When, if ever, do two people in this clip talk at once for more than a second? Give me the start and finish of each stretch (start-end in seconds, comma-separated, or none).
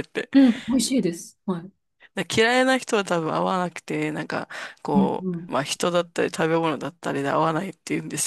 none